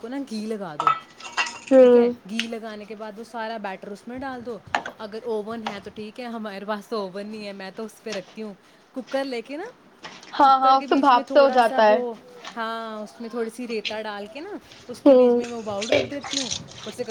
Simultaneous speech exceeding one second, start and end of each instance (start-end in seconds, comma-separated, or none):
10.4-12.0